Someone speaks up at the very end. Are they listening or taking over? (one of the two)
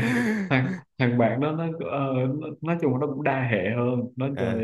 listening